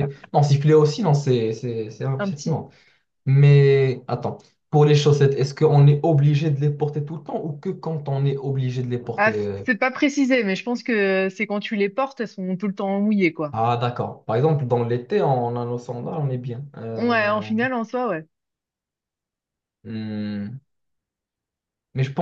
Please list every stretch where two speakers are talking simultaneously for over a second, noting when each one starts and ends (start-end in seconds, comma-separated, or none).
none